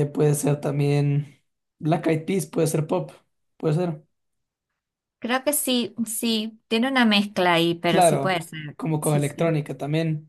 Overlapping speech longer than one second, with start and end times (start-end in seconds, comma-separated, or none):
7.9-9.6